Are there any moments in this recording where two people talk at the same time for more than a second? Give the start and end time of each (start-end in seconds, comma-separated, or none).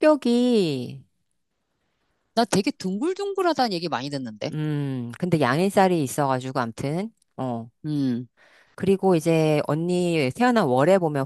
none